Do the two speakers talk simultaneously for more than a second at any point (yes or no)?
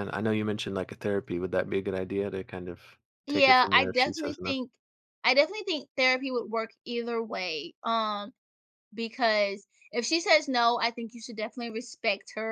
yes